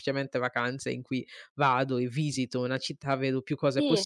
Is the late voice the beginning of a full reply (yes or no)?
no